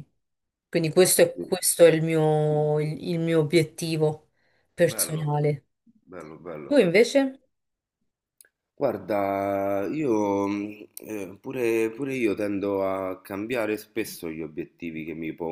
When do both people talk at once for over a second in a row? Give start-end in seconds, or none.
none